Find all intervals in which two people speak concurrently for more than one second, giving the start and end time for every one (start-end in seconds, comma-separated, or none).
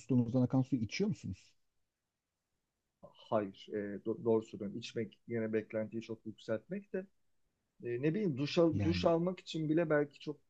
none